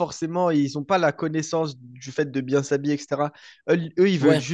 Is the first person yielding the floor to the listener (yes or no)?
no